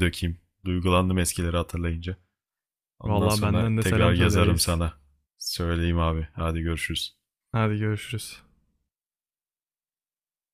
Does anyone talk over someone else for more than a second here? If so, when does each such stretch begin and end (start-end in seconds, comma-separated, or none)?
3.1-4.8